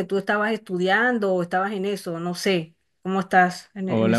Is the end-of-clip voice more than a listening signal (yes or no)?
yes